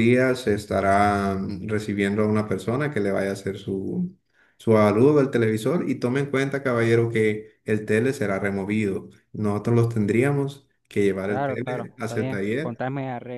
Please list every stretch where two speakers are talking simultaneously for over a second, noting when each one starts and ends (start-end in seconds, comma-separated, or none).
11.3-12.8